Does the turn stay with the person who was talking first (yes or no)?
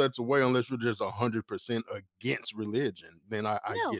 no